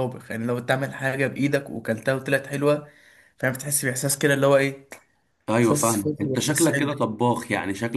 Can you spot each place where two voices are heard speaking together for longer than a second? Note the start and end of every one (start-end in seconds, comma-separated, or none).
5.6-7.0